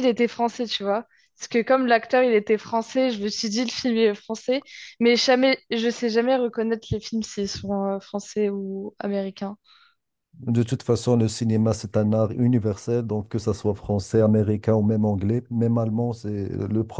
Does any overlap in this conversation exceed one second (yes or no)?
no